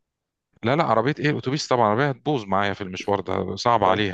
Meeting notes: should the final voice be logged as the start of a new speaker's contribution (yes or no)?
yes